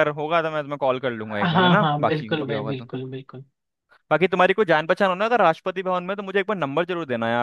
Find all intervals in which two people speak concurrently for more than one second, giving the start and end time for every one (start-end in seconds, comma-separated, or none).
1.4-2.9